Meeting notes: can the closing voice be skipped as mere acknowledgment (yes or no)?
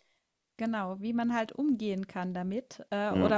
yes